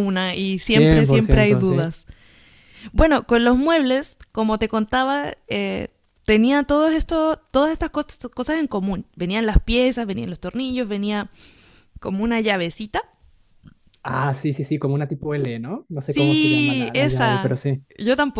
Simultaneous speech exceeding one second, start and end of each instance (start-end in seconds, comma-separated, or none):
0.7-1.9, 16.1-17.6